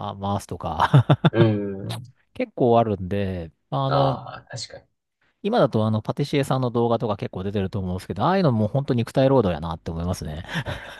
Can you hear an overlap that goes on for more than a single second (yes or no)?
no